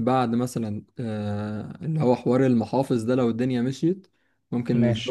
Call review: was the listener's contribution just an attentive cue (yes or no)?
yes